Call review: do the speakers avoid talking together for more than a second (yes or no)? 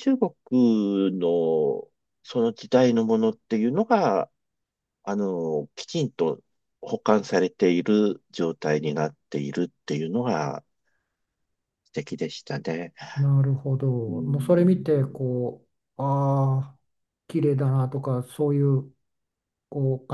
no